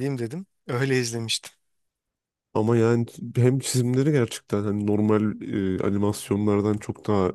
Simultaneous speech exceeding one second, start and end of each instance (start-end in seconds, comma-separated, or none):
none